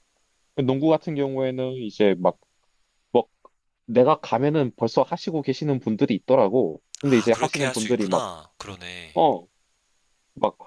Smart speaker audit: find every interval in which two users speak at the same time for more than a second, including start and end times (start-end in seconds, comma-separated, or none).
7.0-8.3